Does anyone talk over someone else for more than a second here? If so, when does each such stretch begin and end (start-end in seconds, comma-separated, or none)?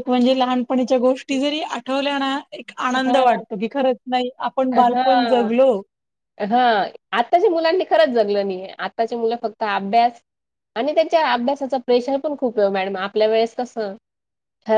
none